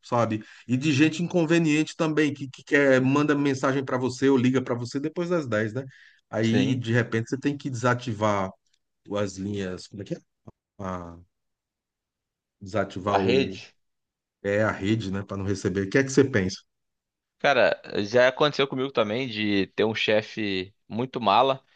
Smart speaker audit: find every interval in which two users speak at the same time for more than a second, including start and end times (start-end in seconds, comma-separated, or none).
none